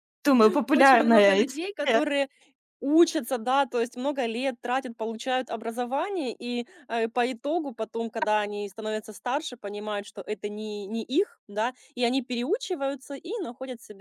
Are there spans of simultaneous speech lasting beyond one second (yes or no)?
yes